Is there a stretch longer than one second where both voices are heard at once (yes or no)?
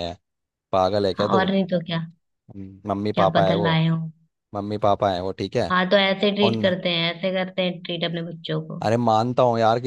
no